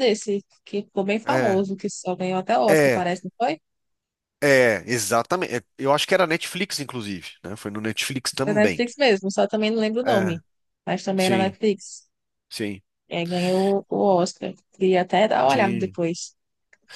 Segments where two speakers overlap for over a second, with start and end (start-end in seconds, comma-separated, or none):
none